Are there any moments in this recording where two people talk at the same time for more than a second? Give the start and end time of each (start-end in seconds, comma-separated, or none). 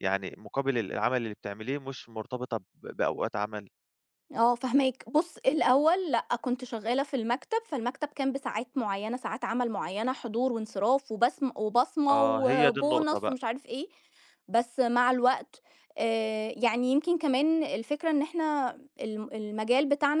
12.1-13.4